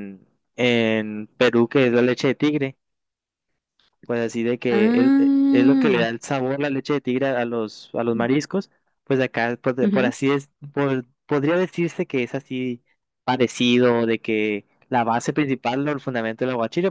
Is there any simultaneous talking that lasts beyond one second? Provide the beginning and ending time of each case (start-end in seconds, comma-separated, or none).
4.7-6.0